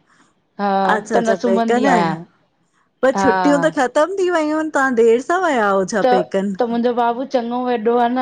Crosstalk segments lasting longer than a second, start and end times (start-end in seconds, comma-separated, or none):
0.9-2.1